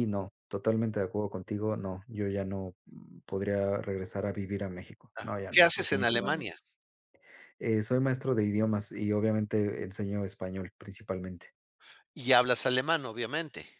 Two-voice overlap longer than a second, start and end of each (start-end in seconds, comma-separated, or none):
5.2-6.5